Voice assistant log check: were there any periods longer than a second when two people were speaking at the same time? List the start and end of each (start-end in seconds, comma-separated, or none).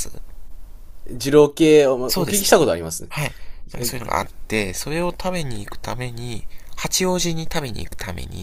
none